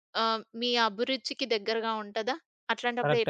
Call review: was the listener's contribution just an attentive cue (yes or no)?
no